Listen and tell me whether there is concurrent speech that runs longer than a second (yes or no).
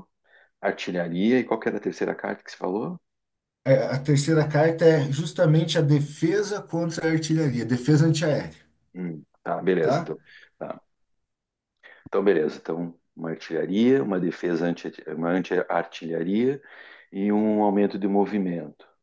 no